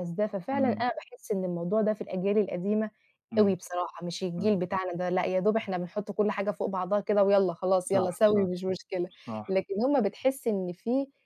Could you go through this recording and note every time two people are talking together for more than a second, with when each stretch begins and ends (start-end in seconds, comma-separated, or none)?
none